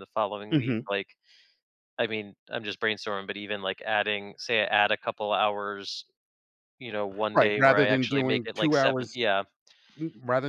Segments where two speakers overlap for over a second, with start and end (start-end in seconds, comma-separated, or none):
7.3-9.2